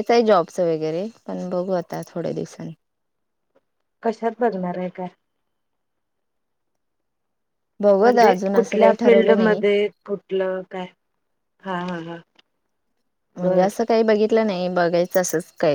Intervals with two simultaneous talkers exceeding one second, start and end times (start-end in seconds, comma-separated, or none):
8.0-9.6